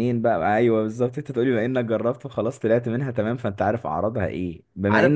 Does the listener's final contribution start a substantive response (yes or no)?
no